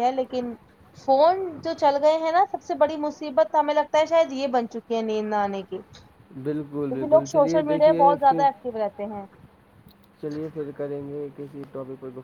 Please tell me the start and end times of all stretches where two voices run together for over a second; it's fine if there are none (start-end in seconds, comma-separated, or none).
6.7-8.4